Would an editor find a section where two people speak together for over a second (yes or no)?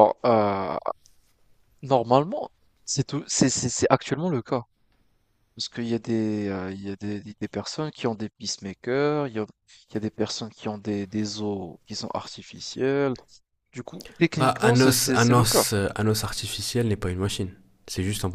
yes